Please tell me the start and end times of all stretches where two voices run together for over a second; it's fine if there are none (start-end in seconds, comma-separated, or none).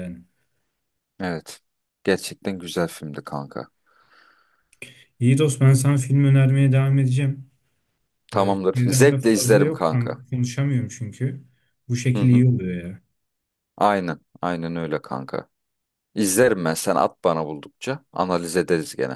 8.3-10.2